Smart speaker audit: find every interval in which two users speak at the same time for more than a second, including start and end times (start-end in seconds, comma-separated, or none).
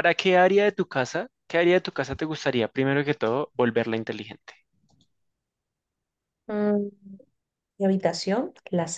none